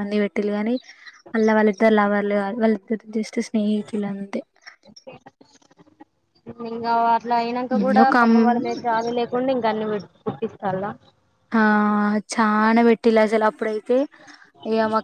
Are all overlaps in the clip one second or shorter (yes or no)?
yes